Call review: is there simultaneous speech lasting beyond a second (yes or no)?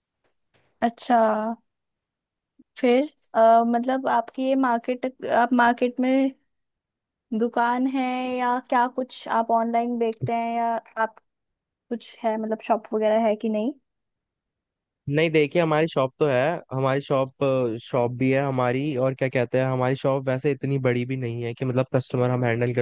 no